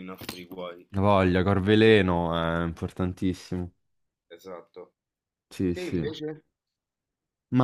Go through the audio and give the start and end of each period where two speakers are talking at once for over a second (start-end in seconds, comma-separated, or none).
none